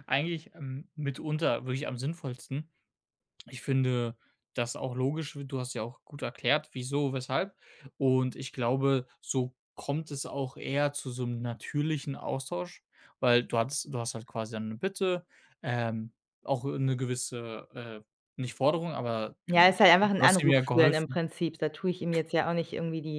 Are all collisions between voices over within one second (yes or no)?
no